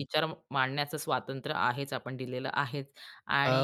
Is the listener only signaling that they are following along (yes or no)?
no